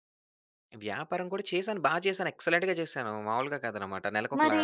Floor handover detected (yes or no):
no